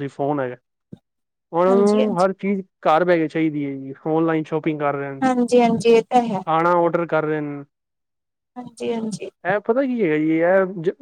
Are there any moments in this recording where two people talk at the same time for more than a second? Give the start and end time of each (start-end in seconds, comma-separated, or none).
none